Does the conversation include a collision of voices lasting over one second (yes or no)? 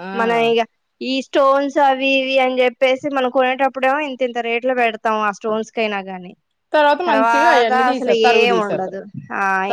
yes